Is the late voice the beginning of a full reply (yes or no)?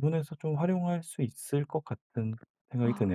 yes